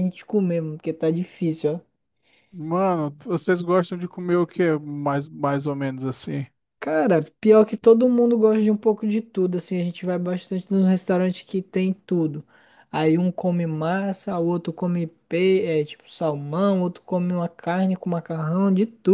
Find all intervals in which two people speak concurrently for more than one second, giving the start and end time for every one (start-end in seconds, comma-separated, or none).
none